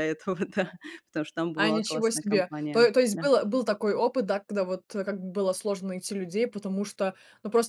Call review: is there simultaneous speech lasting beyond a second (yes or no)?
yes